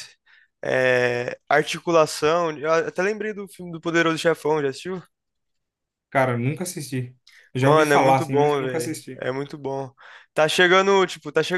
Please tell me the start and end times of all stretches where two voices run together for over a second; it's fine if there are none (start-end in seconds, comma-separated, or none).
7.6-9.2